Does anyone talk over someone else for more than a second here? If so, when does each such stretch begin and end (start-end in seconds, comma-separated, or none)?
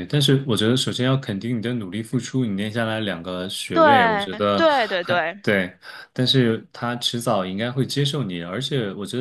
3.7-5.4